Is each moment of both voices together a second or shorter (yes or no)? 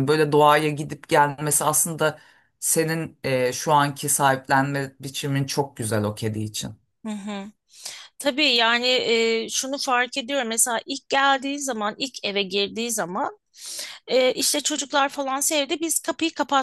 yes